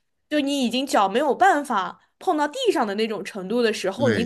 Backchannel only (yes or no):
no